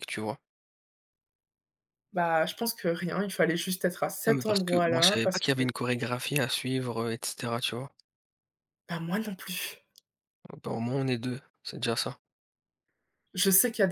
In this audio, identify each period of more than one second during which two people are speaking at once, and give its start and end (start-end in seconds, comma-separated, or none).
4.2-5.6